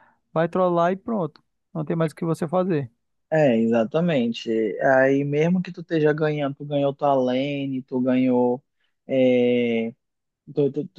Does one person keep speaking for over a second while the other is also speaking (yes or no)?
no